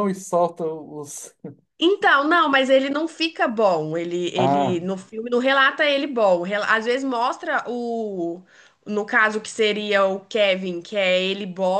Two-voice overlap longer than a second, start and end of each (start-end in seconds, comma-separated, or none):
none